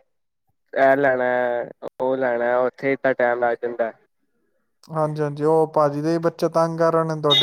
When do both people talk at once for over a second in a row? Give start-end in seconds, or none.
none